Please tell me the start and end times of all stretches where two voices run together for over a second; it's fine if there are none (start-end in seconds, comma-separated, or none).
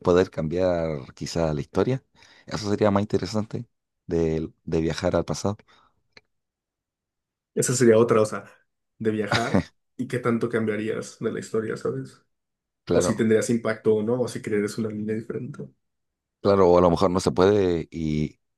none